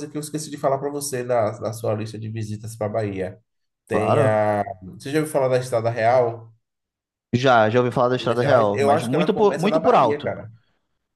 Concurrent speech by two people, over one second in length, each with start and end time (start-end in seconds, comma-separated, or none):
8.2-10.3